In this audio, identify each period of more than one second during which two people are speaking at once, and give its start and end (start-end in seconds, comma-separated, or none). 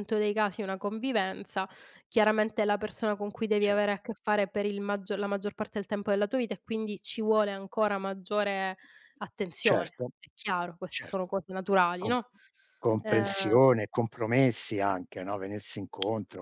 none